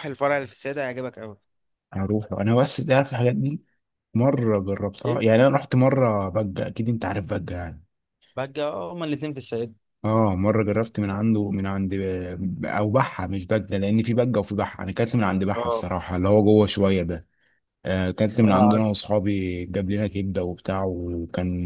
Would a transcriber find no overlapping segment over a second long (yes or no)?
yes